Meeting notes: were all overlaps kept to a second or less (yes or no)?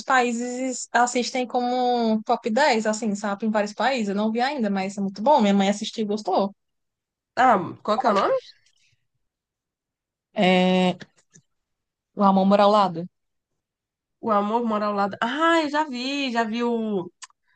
yes